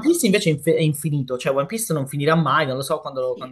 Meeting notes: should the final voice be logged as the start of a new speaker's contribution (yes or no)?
yes